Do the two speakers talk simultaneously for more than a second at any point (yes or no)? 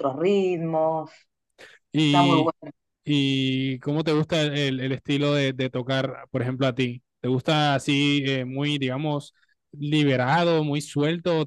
no